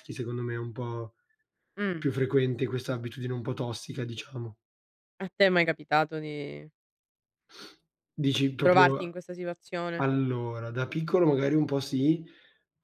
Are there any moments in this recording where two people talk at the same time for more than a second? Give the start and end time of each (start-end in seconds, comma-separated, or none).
none